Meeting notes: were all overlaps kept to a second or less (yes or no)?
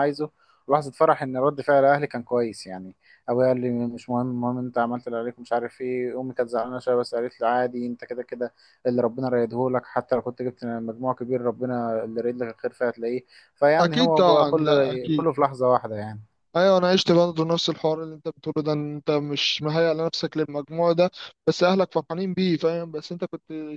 no